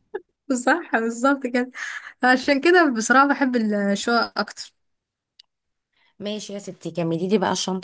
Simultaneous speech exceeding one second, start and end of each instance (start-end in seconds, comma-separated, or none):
none